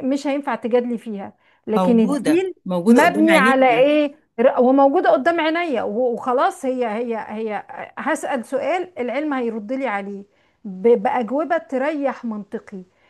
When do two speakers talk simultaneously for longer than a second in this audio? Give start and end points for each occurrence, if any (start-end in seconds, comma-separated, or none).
1.8-3.9